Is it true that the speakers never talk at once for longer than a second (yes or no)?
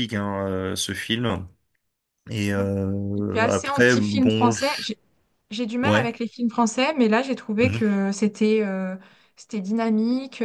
no